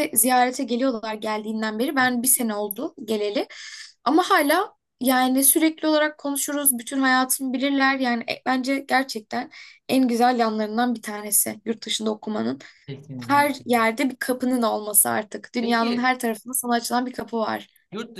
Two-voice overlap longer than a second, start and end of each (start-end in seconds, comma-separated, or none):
none